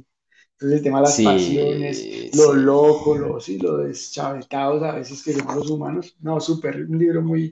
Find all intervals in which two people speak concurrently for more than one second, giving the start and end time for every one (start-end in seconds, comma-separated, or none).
1.0-2.7